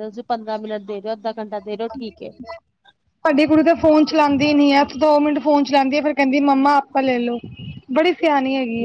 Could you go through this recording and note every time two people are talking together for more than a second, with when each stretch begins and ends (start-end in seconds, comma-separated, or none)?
none